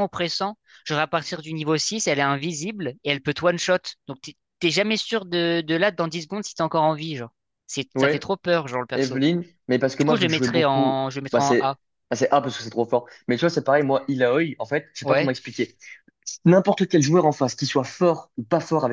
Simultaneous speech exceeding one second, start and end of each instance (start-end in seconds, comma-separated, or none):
10.0-11.8